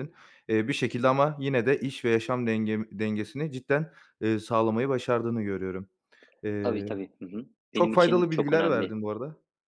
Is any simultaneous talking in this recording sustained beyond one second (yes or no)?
yes